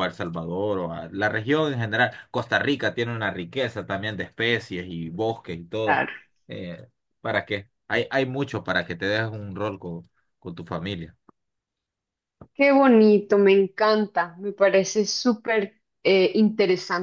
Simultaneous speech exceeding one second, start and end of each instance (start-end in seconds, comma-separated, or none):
none